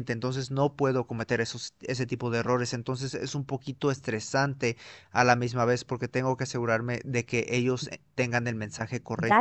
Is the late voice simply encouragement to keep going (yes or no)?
no